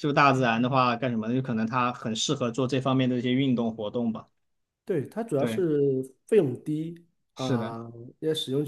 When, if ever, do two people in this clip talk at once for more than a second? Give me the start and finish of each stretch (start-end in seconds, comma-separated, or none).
none